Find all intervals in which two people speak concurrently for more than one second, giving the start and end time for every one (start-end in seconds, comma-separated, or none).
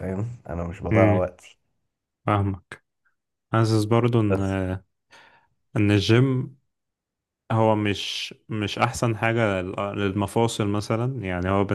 none